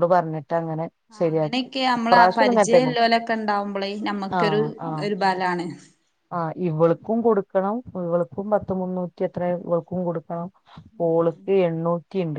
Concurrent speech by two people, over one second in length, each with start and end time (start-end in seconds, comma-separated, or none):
1.1-2.9